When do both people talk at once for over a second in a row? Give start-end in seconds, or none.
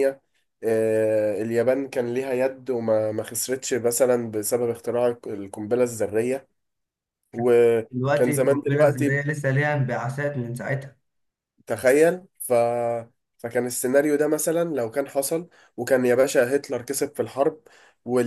7.9-9.3